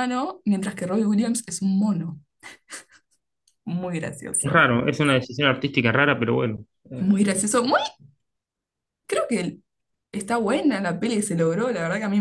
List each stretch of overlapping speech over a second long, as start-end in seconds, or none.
none